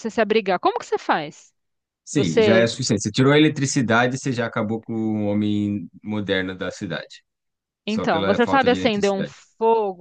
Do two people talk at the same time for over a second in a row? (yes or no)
yes